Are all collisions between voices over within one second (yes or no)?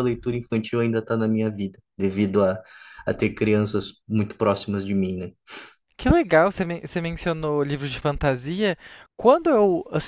yes